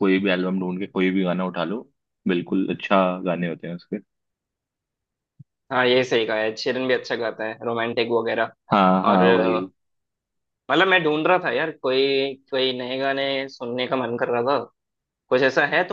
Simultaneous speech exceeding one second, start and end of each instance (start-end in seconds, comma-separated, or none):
none